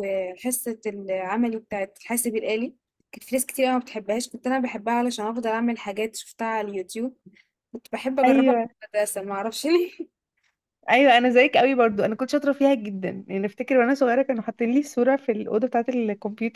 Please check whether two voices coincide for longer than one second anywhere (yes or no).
no